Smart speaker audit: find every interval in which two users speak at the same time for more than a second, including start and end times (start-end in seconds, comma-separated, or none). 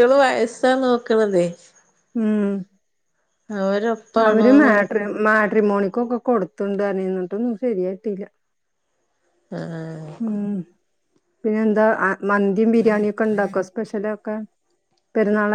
none